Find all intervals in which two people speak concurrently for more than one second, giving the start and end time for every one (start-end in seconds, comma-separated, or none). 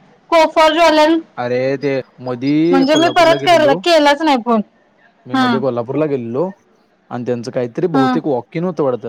none